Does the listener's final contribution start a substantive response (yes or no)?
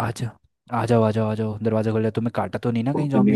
yes